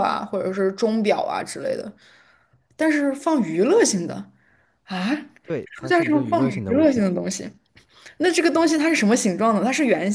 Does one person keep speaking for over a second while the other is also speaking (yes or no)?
yes